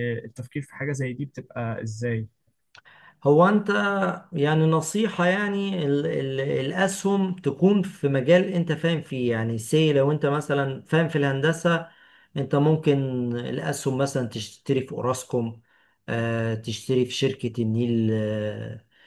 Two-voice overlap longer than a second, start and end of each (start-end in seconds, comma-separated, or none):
none